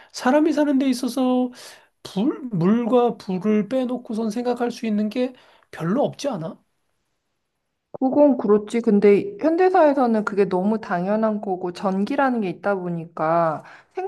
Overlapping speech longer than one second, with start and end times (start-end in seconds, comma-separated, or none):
none